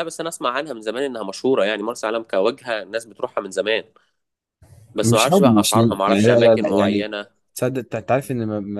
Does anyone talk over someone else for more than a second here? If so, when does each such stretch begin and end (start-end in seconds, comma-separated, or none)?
5.0-7.1